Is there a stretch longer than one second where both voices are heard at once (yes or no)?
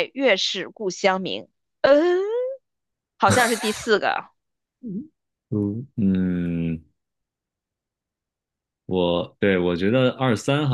no